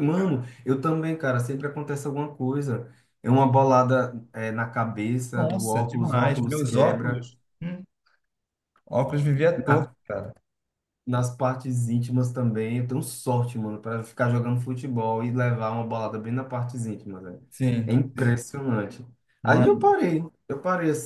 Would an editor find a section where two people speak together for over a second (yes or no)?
yes